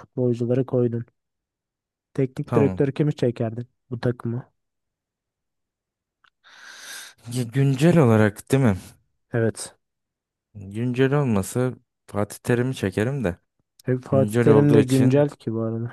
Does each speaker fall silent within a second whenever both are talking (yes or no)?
no